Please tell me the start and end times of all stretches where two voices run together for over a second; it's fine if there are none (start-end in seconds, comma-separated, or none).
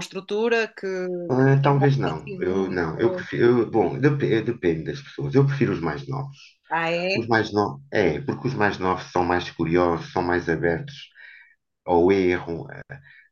1.3-3.3